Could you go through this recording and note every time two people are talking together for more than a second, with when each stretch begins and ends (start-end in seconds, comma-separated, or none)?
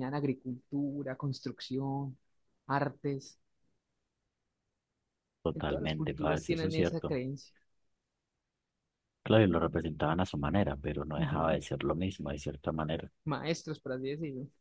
5.5-7.2